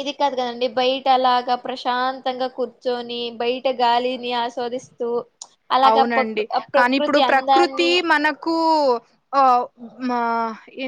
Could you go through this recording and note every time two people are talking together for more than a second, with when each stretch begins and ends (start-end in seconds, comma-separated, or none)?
5.9-7.9